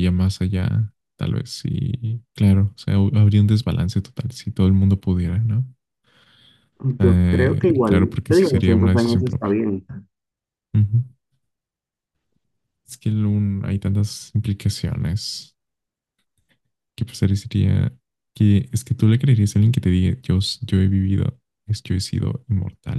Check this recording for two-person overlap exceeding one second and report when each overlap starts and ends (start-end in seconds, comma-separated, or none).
7.0-9.6